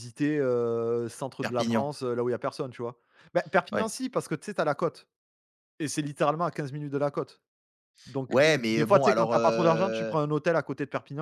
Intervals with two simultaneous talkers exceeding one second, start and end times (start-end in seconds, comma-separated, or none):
8.3-10.2